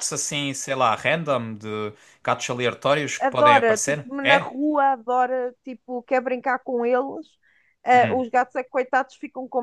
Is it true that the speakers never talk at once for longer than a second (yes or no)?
no